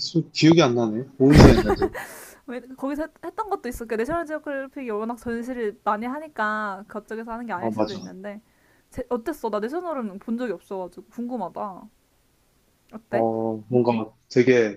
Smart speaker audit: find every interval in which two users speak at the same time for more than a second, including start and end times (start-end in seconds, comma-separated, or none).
none